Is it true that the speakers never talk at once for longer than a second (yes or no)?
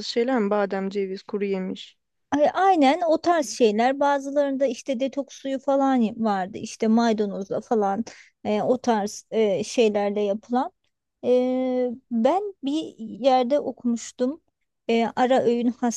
yes